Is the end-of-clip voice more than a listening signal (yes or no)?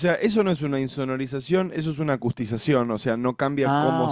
no